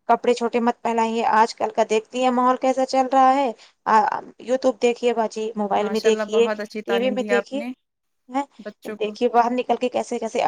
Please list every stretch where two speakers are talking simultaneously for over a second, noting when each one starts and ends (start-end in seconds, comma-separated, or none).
5.8-7.6